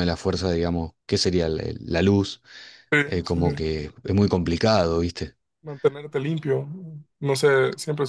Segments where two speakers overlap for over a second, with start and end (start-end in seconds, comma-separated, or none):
none